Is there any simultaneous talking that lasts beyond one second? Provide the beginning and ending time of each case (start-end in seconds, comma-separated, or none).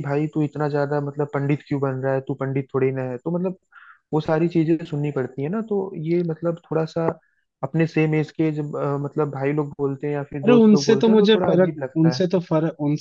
10.4-12.2